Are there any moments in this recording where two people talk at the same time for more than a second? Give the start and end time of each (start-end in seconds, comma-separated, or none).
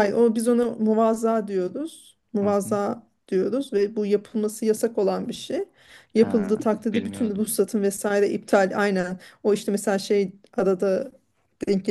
6.2-7.5